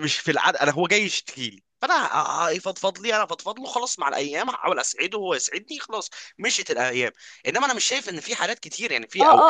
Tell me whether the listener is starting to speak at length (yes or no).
yes